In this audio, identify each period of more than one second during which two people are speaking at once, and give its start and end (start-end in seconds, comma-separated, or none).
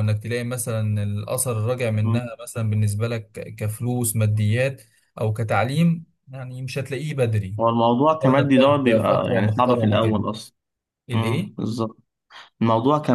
8.1-10.2